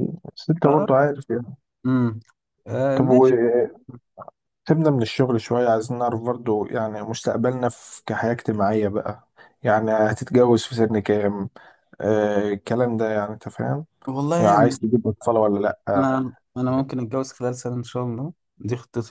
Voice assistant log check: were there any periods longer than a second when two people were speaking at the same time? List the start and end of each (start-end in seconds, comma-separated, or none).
none